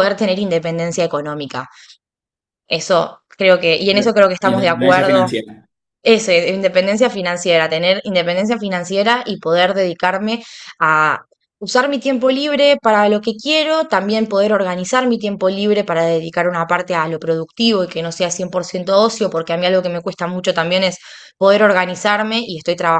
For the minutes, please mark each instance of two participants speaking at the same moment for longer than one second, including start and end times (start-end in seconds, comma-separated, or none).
3.9-5.4